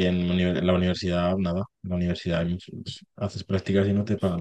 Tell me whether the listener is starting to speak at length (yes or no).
no